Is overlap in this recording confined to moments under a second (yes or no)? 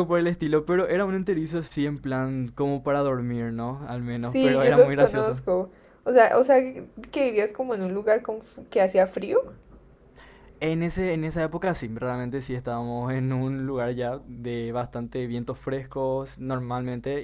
no